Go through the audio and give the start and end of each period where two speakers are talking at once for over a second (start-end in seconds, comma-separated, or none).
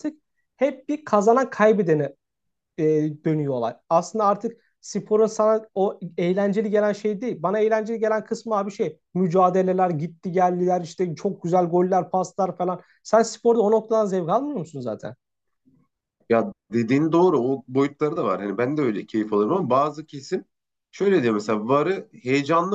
none